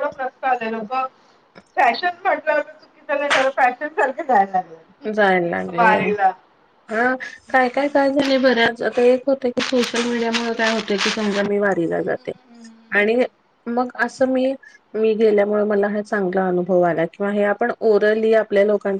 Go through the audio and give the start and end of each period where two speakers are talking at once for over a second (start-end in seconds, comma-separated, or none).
none